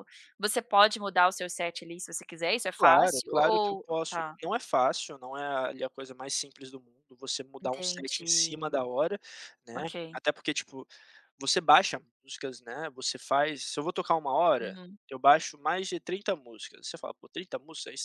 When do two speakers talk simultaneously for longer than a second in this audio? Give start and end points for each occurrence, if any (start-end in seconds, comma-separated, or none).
2.8-4.4, 7.6-8.8